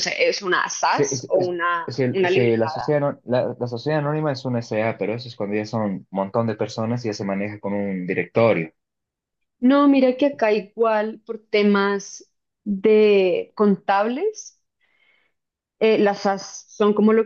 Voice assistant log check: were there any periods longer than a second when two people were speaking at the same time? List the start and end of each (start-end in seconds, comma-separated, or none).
0.9-3.0